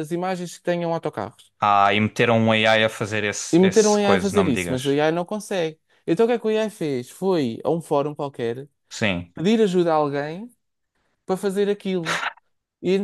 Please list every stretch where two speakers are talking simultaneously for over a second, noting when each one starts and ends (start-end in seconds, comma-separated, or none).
3.5-4.9